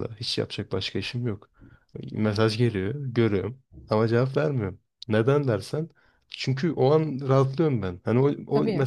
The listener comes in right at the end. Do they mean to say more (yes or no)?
no